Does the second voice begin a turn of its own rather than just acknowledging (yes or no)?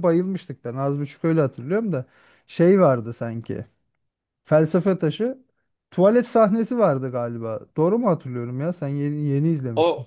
yes